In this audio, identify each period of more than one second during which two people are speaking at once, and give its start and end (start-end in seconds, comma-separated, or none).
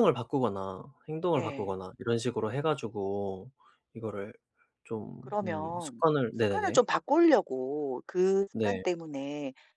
5.2-6.8